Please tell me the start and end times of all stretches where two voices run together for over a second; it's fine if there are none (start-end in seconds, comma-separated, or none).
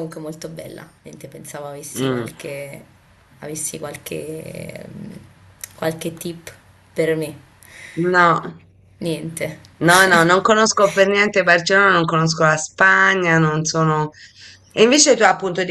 none